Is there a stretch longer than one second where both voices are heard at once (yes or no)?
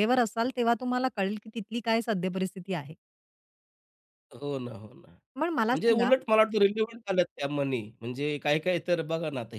no